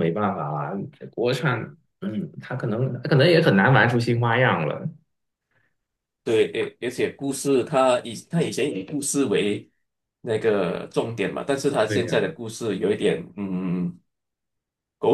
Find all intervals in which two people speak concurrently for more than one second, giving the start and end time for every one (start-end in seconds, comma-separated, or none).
none